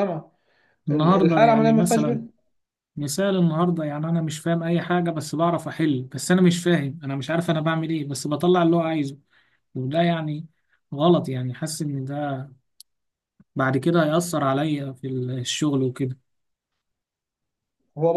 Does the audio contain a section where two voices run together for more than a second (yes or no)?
yes